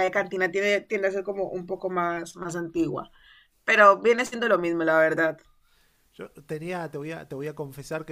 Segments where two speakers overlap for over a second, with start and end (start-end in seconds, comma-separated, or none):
none